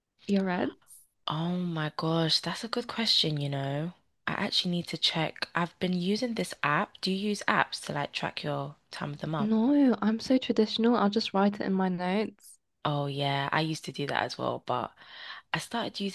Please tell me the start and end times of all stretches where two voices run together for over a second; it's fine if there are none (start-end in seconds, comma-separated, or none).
none